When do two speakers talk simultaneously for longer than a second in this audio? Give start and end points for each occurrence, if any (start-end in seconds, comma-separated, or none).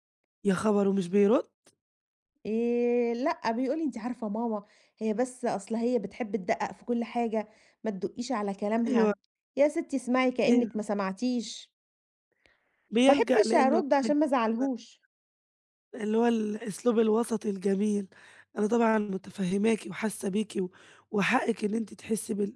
13.1-14.3